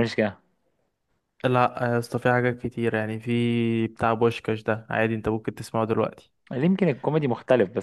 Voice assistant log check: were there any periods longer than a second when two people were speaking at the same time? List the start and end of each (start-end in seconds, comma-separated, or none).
none